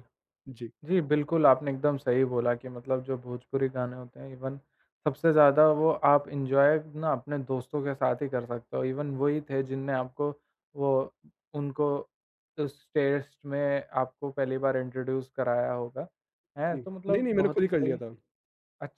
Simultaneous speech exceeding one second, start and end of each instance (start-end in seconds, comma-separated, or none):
16.7-18.0